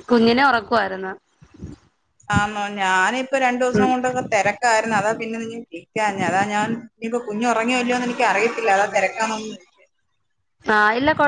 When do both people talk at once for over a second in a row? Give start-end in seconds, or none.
none